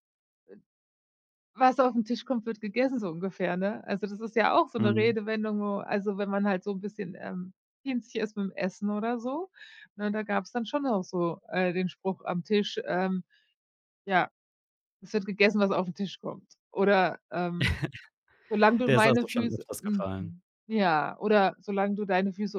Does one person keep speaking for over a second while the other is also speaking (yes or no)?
yes